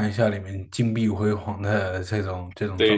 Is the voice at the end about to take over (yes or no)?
yes